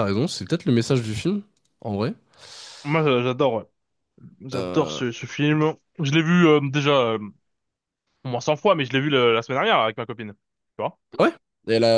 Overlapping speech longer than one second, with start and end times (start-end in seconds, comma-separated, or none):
none